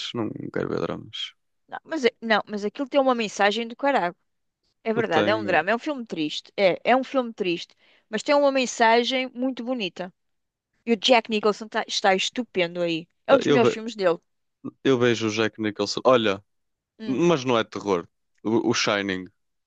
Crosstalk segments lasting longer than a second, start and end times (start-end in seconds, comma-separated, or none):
none